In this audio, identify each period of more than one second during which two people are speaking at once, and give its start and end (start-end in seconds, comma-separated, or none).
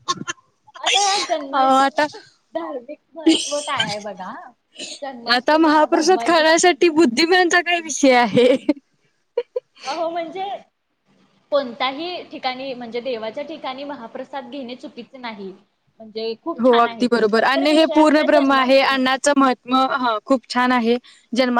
5.3-7.0, 16.6-19.0